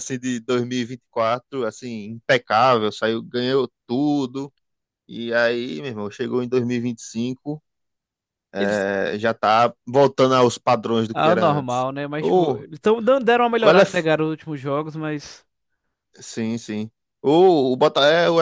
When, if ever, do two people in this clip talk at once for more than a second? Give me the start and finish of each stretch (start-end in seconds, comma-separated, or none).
11.1-12.6